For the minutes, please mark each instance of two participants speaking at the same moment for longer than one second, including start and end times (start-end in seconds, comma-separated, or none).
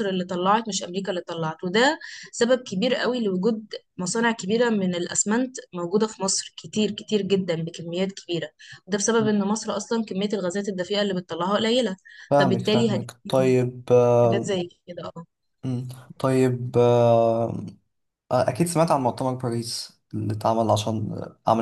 12.3-13.6